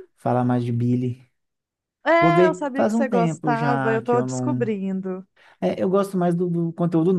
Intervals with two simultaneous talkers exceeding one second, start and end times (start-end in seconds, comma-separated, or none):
2.2-4.7